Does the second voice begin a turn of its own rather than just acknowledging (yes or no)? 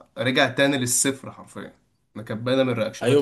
yes